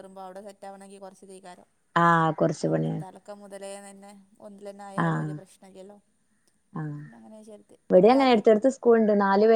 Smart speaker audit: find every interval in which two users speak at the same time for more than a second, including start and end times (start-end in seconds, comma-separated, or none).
none